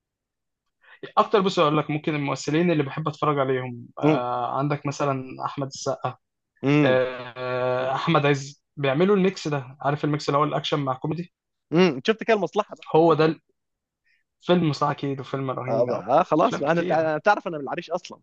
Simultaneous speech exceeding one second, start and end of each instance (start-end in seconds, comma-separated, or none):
15.7-17.1